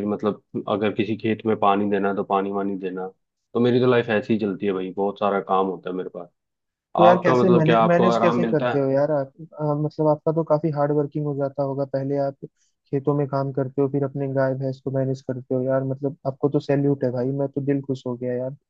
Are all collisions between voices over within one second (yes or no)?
no